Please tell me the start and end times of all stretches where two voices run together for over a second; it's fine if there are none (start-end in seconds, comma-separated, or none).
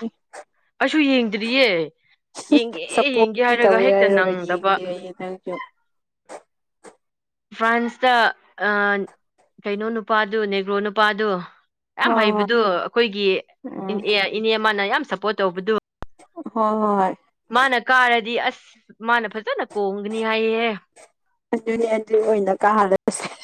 2.9-4.7